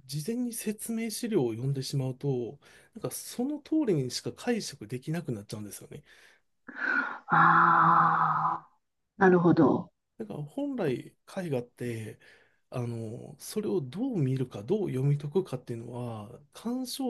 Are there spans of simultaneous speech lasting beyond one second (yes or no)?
no